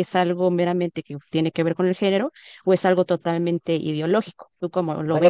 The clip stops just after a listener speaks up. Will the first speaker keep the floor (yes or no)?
no